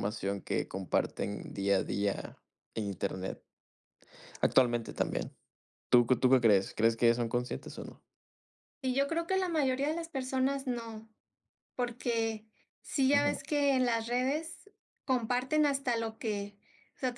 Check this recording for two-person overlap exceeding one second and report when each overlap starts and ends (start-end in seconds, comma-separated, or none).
none